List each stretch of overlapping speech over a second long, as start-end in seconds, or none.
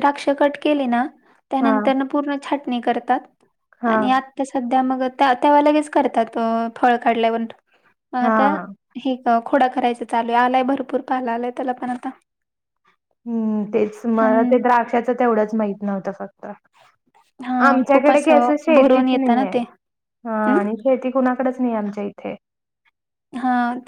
17.7-19.6